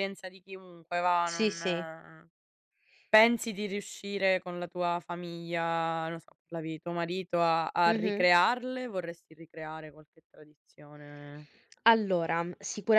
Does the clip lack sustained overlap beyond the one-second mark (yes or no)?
yes